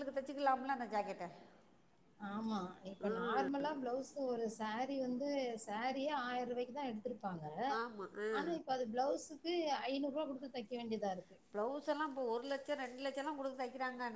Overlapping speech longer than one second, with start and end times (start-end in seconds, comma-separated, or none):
none